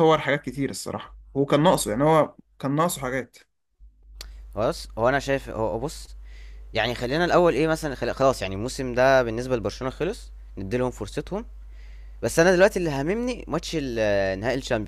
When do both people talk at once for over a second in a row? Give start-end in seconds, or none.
none